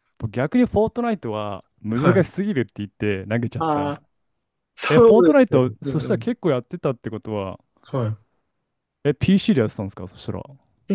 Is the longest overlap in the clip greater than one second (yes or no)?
yes